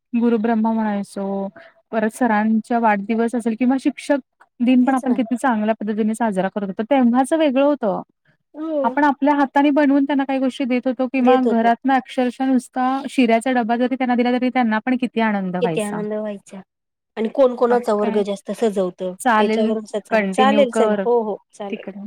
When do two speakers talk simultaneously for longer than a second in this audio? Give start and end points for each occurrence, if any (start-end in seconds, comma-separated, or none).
none